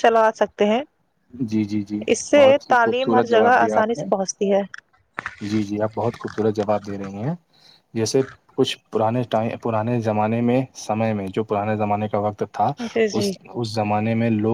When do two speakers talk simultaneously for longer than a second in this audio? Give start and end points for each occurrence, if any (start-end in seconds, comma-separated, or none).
2.1-4.0